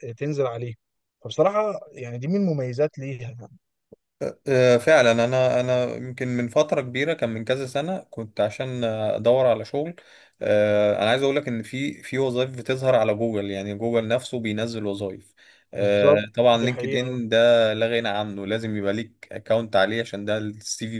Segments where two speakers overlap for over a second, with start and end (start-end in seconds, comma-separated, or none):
15.8-17.2